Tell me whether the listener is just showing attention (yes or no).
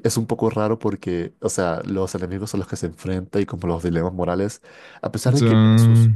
yes